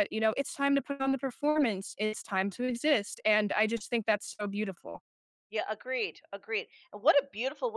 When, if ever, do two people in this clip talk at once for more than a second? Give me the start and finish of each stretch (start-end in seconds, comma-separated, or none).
none